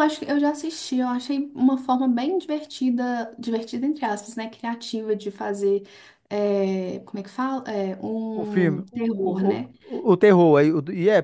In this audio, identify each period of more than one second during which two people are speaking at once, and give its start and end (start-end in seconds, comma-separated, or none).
8.3-9.7